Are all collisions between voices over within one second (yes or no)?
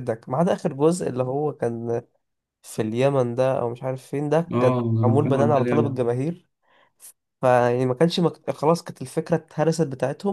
no